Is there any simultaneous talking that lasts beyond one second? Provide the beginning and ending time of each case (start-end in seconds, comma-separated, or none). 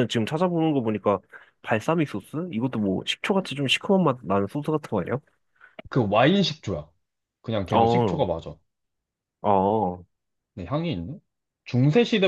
none